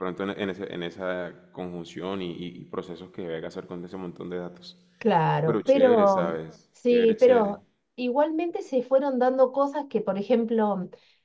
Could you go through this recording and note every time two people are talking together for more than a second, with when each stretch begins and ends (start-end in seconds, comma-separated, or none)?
5.4-7.6